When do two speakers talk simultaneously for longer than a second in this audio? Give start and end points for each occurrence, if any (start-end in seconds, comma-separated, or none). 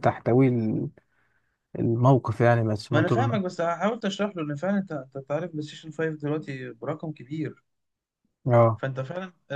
none